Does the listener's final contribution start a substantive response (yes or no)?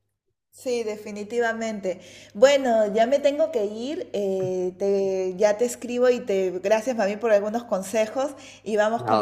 yes